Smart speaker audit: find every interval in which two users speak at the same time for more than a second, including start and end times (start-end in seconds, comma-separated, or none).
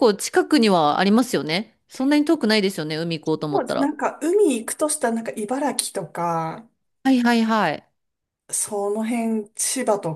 none